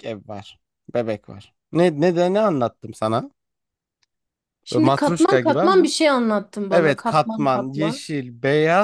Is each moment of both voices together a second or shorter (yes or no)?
no